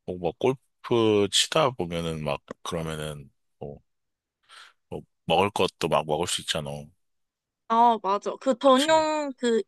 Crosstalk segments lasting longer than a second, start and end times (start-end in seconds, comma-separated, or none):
none